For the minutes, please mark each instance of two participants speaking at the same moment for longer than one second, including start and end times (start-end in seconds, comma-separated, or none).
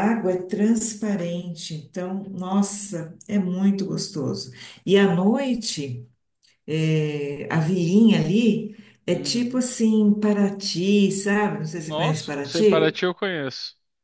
11.8-13.0